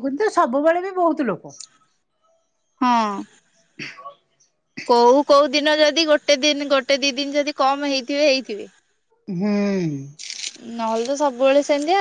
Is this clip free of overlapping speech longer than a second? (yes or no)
yes